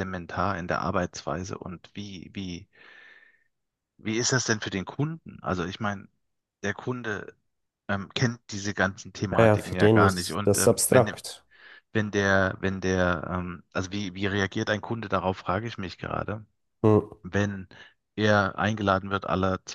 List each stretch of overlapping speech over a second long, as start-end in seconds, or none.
9.4-11.1